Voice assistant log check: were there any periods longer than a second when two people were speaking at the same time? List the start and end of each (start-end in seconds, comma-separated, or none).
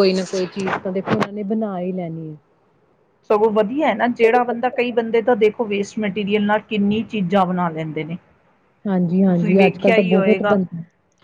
9.3-10.5